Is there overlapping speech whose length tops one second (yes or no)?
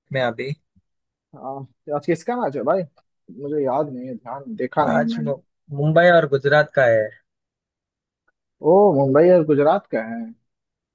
no